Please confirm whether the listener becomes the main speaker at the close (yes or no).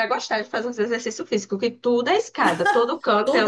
yes